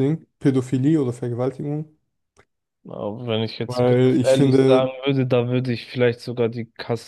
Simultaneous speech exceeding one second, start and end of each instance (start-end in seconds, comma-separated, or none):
3.7-4.9